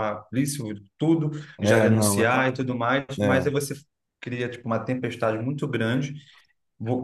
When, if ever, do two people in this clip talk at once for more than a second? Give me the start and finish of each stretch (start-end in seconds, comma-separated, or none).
1.6-3.5